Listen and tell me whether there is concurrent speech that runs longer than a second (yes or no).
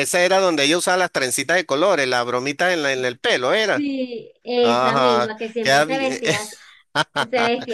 yes